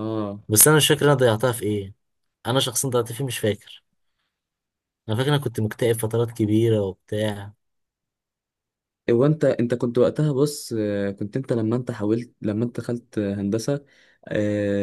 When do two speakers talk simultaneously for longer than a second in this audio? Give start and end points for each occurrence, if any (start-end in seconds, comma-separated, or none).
none